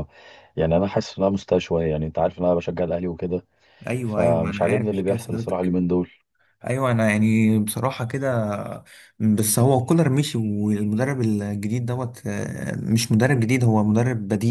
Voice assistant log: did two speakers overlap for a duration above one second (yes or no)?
yes